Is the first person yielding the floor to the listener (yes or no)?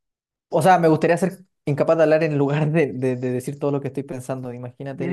yes